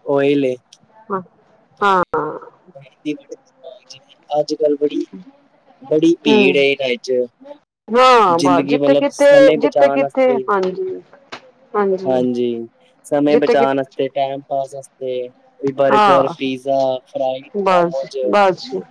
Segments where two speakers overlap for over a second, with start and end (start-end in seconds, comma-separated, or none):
8.4-10.4